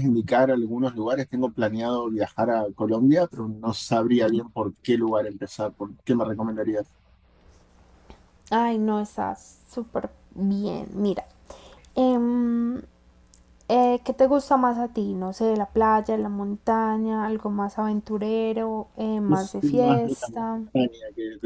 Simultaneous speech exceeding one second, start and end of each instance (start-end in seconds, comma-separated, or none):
19.3-20.6